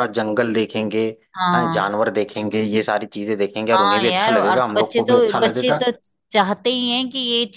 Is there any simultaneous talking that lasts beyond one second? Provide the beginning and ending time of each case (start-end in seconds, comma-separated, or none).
3.7-5.8